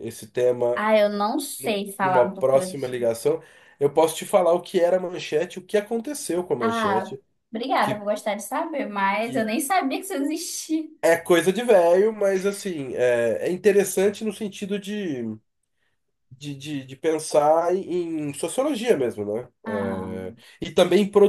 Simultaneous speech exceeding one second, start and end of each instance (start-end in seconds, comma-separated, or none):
1.6-3.0